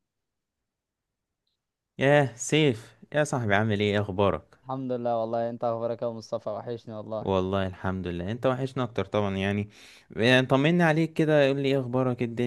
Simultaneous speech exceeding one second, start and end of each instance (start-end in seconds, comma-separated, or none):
none